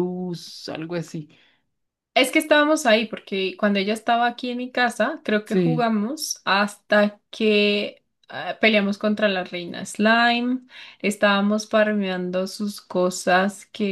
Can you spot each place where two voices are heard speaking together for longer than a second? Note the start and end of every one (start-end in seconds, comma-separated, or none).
none